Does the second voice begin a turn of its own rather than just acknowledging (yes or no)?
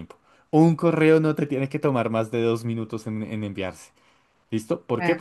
no